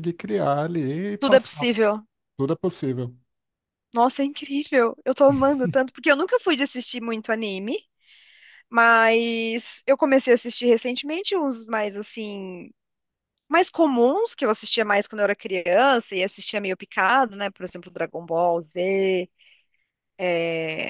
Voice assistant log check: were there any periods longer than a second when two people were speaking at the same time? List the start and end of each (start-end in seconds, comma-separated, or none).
none